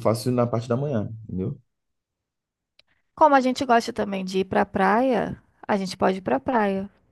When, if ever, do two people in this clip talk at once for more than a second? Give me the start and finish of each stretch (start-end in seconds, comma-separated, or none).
none